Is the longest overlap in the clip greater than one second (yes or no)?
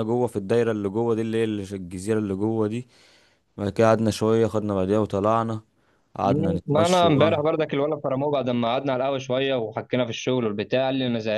yes